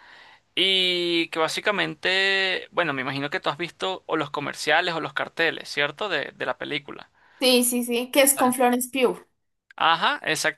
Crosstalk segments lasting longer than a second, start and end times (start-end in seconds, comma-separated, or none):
none